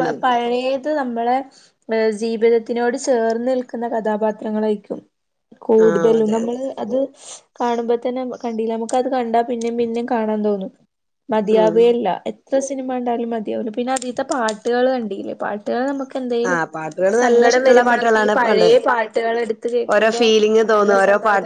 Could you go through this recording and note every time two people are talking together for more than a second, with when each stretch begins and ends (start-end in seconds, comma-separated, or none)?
16.5-18.7